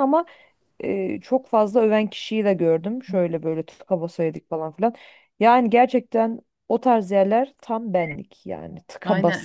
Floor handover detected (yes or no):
yes